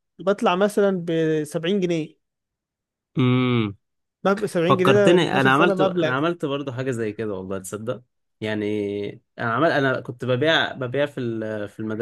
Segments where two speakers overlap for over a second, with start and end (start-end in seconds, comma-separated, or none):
4.7-6.1